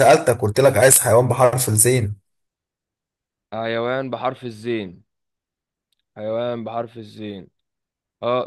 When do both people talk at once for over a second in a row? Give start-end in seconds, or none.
none